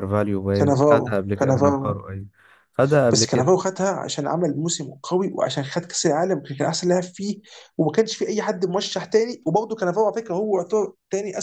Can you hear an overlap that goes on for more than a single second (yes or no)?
yes